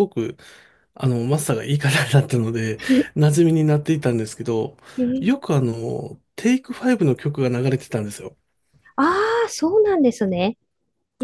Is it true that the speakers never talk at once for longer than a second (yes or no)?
yes